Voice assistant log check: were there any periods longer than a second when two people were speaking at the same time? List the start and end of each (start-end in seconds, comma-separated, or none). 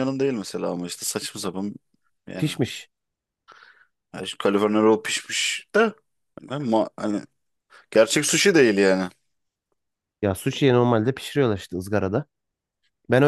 none